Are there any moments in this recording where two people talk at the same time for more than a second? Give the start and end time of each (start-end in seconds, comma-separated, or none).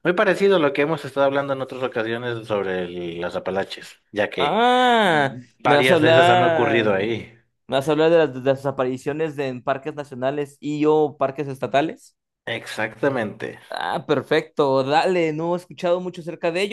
5.6-7.0